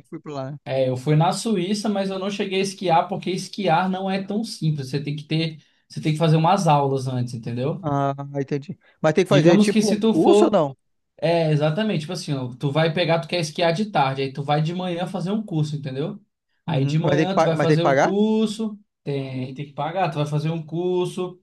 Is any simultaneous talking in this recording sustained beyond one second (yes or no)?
yes